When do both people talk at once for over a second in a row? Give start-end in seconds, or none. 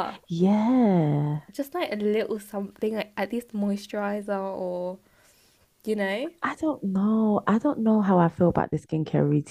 none